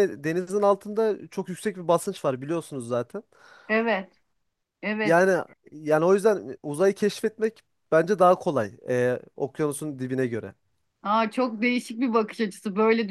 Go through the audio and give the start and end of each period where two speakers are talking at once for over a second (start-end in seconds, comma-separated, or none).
none